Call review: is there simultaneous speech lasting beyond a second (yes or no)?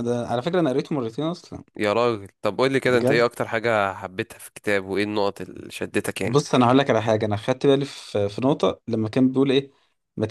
no